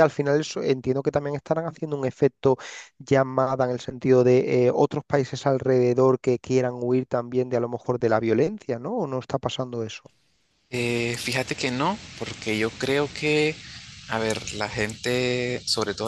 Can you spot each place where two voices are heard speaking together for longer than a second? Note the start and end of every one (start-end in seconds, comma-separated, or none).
none